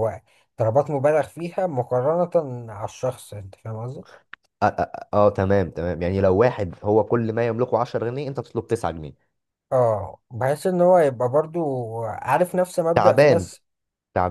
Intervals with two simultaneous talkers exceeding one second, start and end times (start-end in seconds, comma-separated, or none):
none